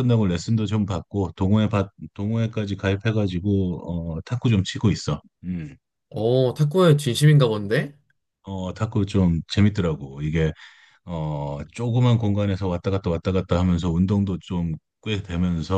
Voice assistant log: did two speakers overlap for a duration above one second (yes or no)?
no